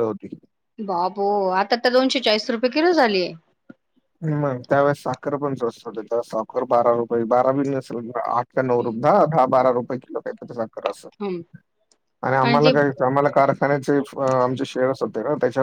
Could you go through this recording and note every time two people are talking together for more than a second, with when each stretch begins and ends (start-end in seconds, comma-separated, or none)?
none